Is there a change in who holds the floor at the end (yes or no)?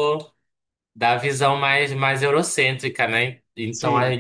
no